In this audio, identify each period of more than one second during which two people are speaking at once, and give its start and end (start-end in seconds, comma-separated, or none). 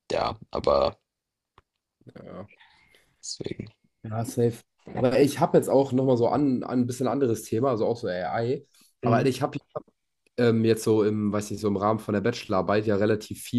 none